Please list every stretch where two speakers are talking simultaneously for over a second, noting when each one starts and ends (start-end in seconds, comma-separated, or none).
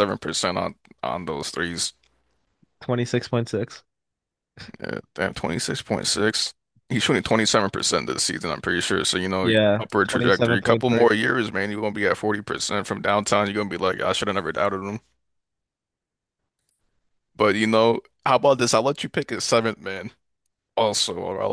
9.4-11.1